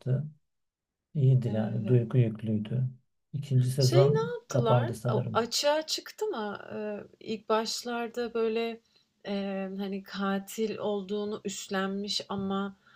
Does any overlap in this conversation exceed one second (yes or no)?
yes